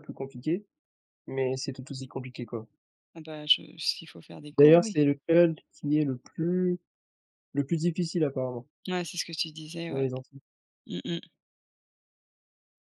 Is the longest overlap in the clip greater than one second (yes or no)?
no